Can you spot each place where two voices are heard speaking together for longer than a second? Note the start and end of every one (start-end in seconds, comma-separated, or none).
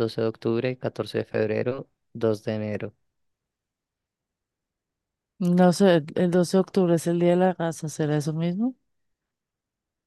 none